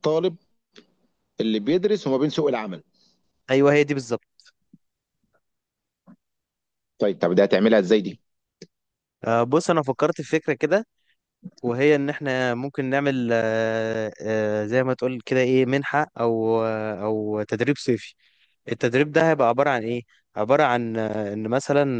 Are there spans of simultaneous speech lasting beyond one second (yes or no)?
no